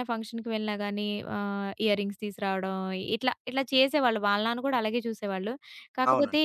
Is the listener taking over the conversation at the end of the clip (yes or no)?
no